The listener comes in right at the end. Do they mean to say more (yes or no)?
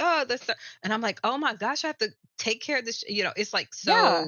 yes